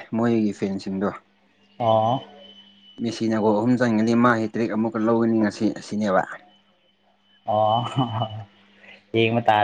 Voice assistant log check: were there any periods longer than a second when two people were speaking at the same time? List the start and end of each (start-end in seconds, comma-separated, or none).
none